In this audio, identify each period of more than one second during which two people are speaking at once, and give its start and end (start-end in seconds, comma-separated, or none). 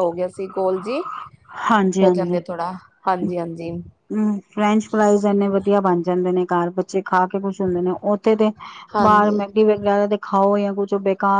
none